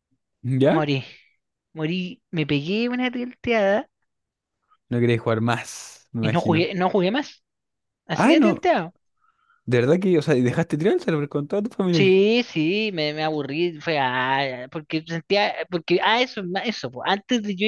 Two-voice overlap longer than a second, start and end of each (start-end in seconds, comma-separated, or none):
none